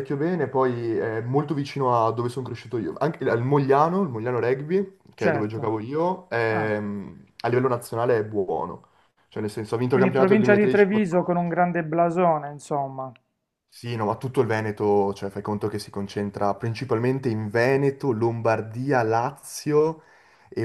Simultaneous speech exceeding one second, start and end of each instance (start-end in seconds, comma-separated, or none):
9.9-11.2